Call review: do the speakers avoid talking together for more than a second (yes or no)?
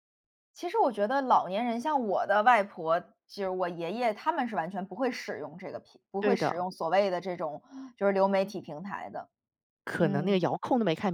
yes